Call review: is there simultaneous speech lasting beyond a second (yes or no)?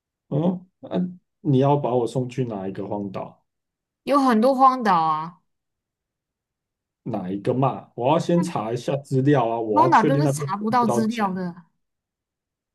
yes